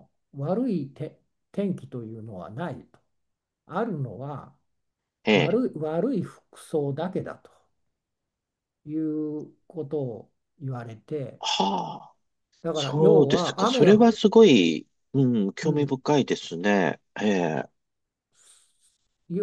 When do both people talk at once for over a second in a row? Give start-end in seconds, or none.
12.7-14.1